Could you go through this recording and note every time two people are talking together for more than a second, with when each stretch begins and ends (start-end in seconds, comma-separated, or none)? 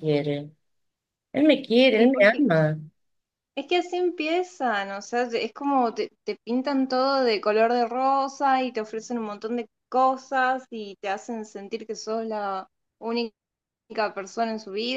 none